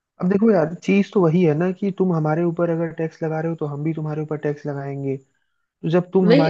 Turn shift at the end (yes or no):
no